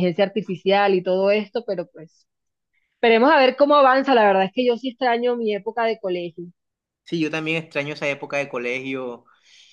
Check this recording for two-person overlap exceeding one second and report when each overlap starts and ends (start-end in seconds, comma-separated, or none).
none